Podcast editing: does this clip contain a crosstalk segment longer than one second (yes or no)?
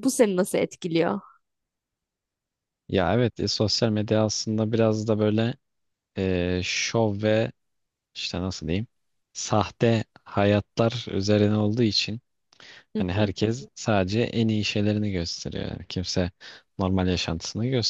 no